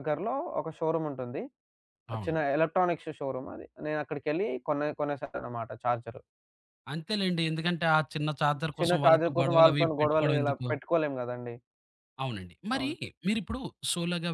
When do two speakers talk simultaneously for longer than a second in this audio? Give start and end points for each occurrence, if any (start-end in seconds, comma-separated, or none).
8.8-10.7